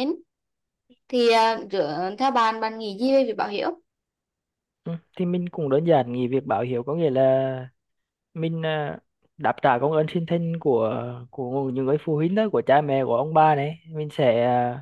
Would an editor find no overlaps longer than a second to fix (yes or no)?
yes